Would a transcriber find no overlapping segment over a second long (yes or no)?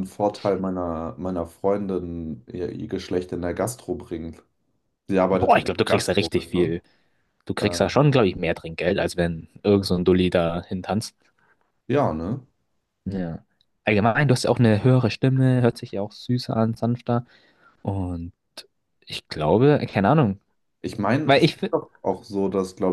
no